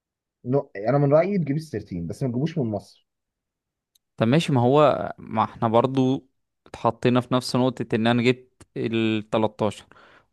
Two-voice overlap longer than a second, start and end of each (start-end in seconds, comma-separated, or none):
none